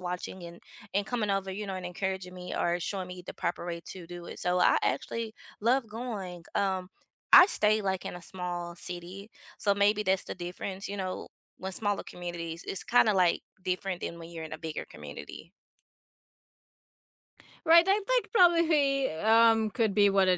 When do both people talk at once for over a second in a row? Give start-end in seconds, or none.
none